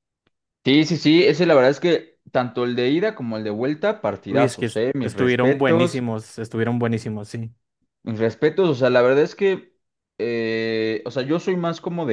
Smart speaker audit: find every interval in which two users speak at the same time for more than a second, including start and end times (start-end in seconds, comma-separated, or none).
4.3-6.0